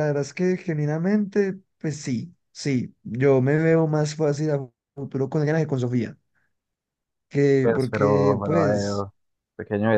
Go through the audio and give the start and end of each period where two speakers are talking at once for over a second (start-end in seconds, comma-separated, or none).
7.6-9.1